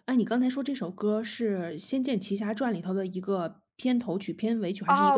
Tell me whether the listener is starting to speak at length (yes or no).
yes